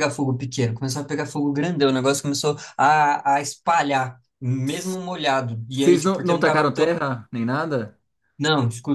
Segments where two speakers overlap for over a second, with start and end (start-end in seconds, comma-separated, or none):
5.7-7.0